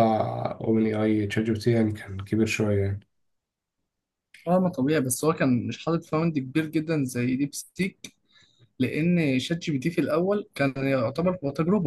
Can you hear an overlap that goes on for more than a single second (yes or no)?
no